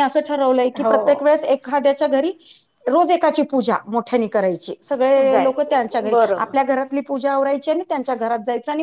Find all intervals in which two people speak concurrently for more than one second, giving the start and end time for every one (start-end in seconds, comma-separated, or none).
5.2-6.6